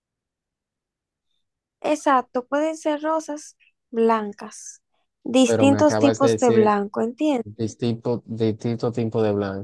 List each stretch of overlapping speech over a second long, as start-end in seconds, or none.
5.5-6.8